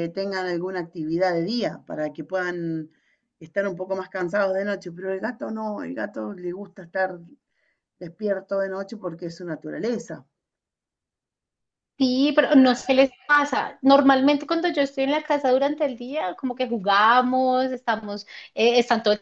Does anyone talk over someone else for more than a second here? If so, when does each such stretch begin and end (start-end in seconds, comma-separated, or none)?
none